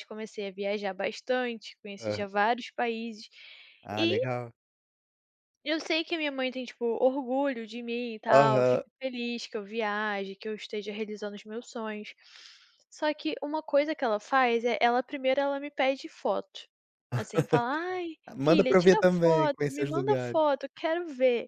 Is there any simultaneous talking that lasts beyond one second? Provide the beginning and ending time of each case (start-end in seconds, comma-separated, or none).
18.4-20.4